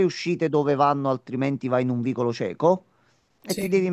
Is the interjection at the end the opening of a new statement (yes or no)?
no